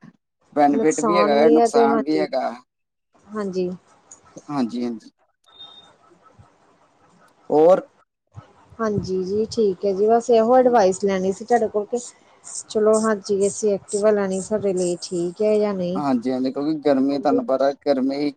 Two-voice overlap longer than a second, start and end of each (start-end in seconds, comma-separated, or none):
0.8-2.2